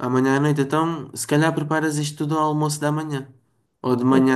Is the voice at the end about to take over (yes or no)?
no